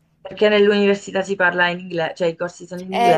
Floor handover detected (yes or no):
yes